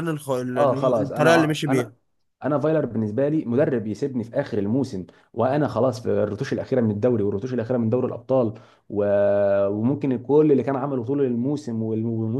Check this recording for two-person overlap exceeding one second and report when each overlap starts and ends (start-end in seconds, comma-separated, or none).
0.6-1.9